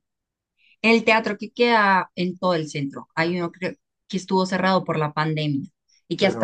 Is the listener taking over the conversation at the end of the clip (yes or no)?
no